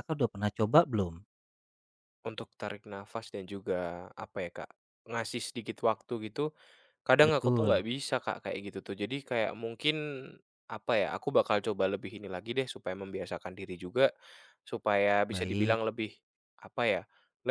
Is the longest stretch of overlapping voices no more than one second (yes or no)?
yes